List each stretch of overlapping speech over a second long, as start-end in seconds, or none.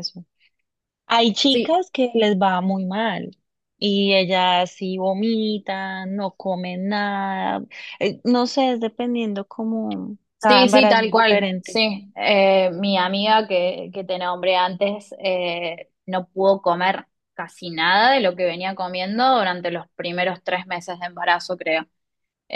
10.4-11.8